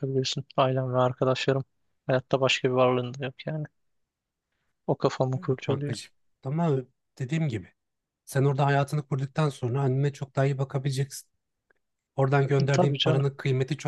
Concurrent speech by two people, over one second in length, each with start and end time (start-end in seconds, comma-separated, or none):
none